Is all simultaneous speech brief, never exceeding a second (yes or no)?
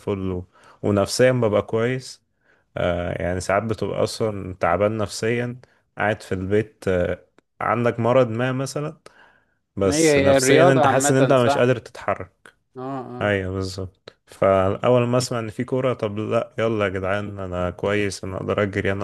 no